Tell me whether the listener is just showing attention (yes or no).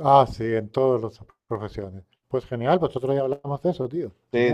no